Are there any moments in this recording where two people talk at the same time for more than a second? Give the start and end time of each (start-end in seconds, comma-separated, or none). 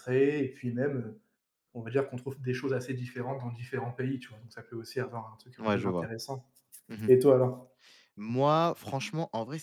none